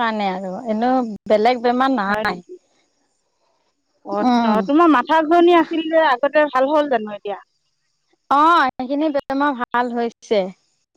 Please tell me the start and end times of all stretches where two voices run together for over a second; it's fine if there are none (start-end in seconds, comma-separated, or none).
none